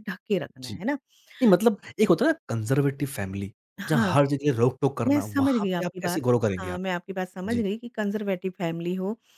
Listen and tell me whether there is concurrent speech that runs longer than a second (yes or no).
yes